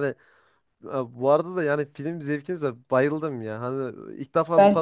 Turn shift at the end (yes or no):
no